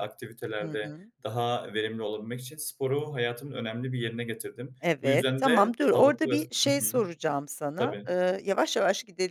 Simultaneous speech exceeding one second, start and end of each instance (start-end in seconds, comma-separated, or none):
4.8-6.8